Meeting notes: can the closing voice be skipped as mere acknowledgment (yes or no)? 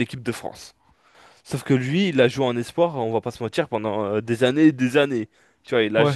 yes